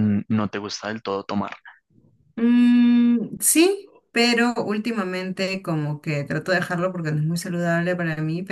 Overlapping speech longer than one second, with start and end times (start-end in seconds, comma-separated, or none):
none